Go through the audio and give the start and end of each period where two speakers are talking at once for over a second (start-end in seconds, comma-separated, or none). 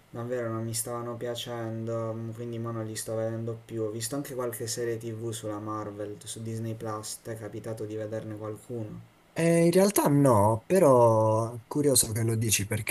none